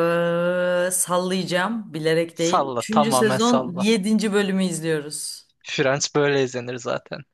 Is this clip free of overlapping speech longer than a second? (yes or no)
no